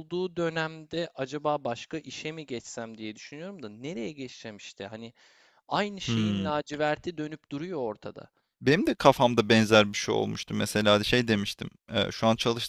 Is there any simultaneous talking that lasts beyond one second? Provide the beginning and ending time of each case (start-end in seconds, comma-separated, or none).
none